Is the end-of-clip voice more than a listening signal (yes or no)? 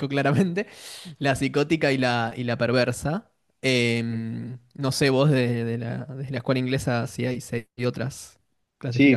yes